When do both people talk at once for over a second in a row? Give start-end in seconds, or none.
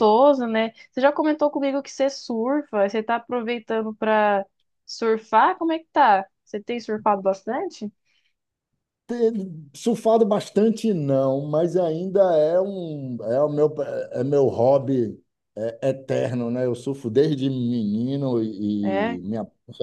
none